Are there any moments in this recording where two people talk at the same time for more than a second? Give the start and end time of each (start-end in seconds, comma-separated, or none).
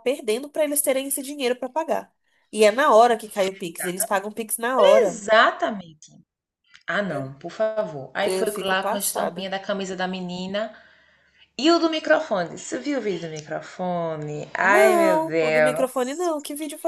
8.2-9.5, 14.6-16.2